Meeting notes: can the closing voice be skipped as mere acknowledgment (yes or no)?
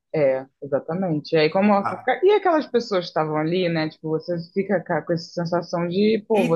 no